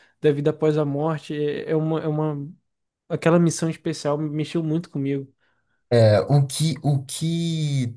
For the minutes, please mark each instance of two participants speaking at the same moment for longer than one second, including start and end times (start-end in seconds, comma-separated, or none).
none